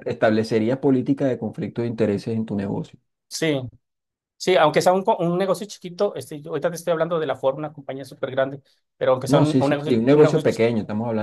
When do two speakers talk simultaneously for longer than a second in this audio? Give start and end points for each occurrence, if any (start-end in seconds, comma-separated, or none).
9.2-10.6